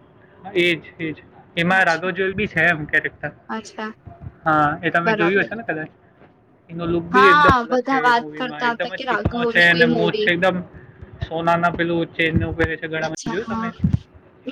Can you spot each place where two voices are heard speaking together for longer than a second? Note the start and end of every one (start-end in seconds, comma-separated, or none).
7.1-10.3